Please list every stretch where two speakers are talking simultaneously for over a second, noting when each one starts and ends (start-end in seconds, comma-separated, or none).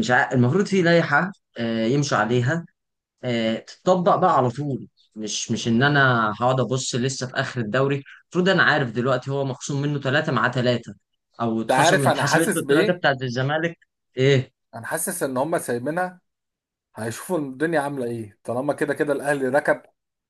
11.6-13.1